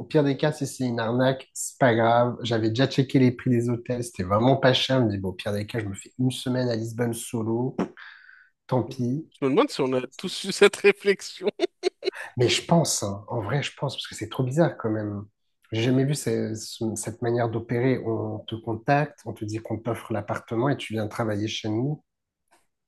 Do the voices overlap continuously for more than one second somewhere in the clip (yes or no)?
no